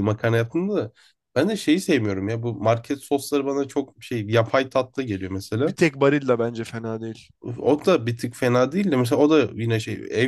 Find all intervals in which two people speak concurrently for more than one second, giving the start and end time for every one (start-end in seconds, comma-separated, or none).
none